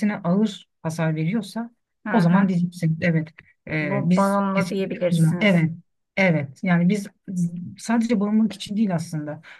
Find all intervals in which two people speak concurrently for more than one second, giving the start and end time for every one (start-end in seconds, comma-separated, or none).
3.8-5.7